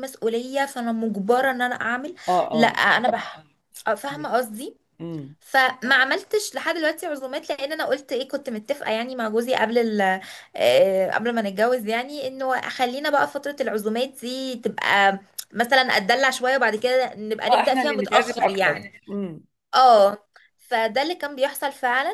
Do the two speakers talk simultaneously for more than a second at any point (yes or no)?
yes